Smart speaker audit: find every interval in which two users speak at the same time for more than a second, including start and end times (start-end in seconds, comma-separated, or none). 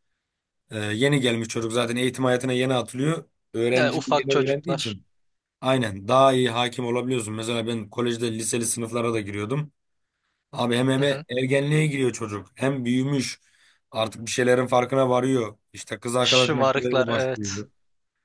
3.7-5.0, 16.2-17.6